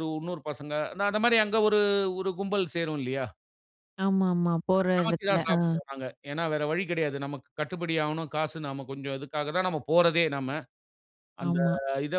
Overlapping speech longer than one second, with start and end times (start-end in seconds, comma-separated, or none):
none